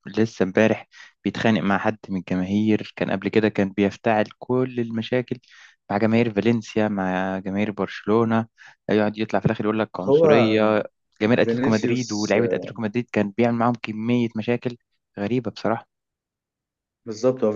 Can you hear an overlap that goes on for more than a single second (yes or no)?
yes